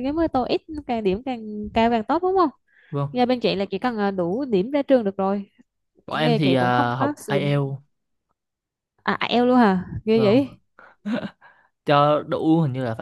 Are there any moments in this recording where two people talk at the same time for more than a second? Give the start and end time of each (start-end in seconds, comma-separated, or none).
6.1-7.7